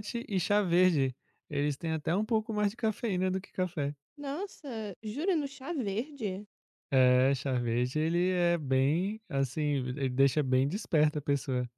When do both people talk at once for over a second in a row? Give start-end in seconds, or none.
none